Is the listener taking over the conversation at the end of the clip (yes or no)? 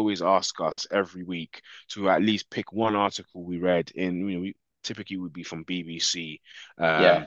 no